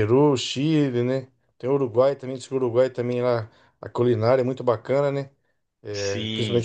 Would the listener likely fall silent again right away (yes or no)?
no